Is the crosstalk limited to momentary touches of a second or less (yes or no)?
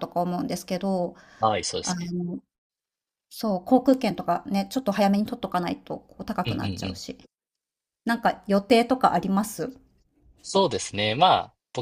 yes